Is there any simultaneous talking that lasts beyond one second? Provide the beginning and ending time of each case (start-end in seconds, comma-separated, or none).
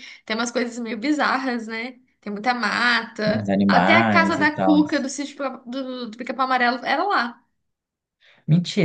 3.3-4.8